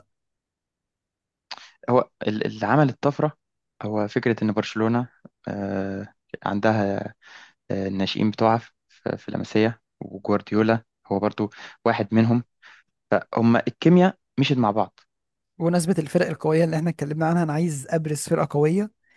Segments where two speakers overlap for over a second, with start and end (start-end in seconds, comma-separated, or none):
none